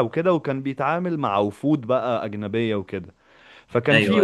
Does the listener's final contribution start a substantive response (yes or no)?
no